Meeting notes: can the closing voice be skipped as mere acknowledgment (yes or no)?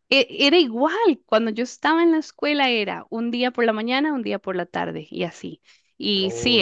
yes